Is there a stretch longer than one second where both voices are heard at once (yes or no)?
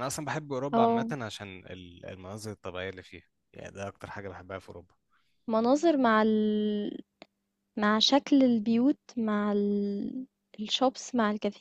no